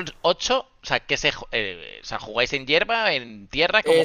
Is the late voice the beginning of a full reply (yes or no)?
yes